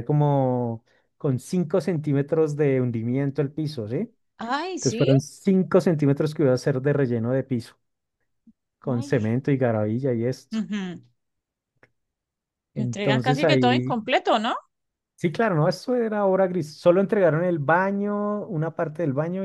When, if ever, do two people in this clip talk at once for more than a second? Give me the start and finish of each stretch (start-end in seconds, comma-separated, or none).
12.8-14.0